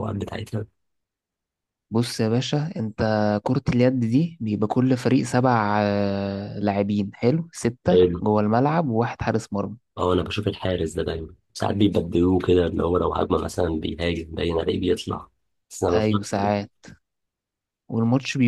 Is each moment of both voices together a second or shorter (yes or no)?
yes